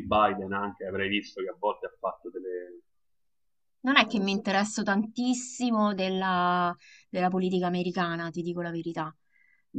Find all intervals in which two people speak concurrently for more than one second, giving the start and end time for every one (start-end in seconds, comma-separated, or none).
none